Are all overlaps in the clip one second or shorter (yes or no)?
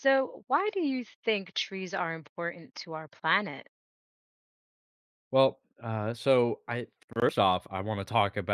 yes